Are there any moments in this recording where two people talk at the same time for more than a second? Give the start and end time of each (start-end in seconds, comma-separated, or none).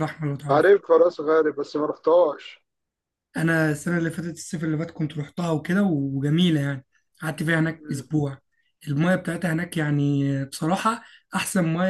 none